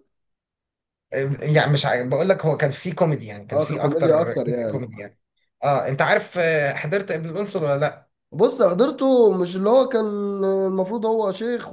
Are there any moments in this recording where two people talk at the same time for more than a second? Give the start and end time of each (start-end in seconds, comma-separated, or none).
3.5-4.9